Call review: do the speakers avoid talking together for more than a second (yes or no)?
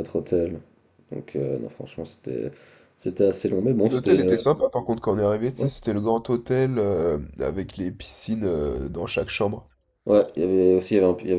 yes